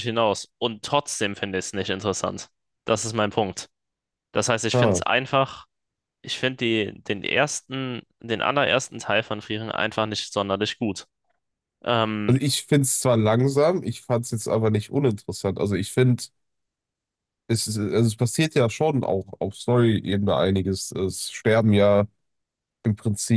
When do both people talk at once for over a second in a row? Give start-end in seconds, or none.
none